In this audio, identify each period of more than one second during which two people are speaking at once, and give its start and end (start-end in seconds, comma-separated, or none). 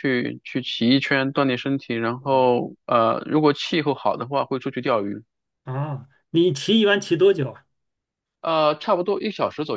none